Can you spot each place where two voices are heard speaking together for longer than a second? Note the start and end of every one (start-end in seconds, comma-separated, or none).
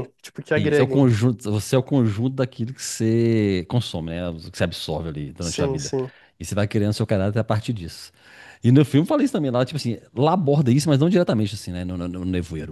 none